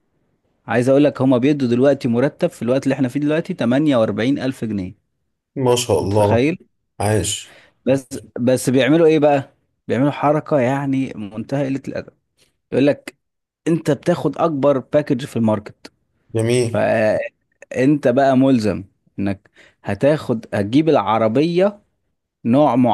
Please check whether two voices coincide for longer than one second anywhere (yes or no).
no